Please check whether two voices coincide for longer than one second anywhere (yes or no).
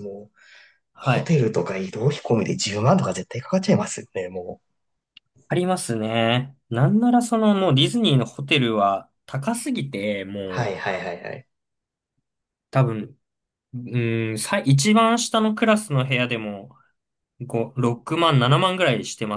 no